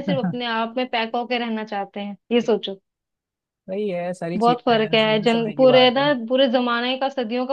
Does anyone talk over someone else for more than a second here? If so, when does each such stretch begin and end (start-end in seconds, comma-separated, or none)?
4.4-6.0